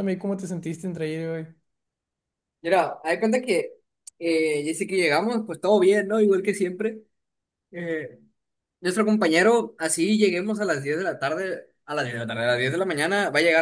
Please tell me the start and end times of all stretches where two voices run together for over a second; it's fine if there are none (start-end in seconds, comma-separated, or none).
none